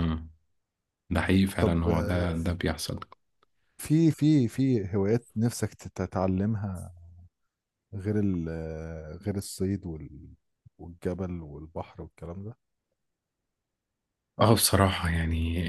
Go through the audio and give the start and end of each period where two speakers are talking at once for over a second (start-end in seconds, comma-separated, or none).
none